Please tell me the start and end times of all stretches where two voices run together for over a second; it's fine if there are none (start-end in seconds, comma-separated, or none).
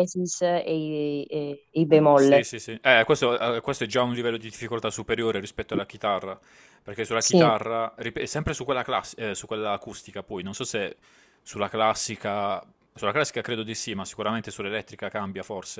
none